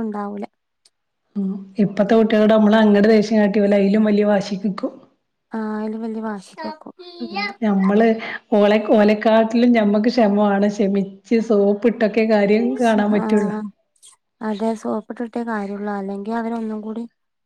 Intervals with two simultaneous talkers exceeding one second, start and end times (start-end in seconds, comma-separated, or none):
none